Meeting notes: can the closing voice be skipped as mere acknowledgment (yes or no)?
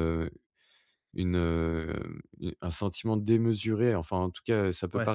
yes